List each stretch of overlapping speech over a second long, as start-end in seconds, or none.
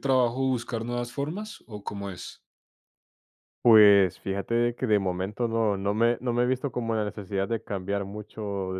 none